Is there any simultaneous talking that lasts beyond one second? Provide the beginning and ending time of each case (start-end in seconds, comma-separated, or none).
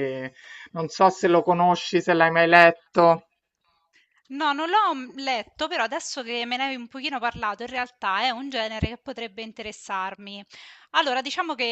none